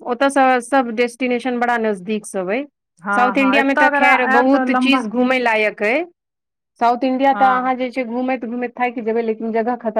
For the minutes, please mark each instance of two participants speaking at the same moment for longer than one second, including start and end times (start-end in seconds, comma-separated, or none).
3.1-5.0